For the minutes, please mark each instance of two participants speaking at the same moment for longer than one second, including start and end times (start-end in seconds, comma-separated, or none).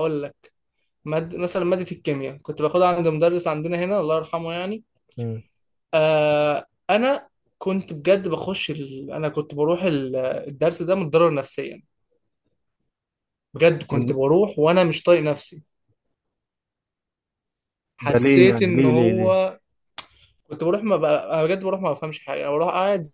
18.1-19.4